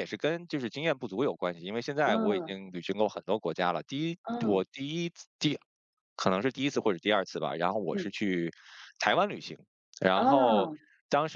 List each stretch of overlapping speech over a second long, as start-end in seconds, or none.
none